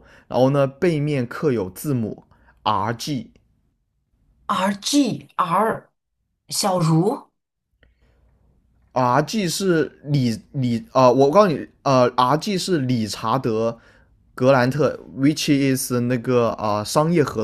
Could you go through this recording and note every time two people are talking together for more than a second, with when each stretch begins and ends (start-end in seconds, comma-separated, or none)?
none